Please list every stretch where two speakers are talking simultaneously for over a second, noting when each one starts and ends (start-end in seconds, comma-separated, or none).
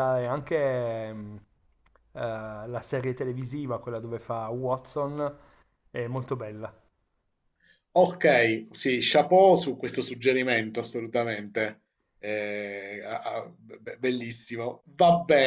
none